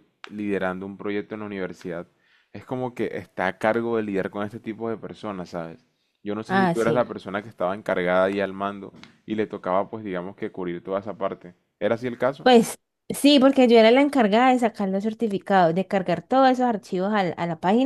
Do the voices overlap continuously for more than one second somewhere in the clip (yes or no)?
no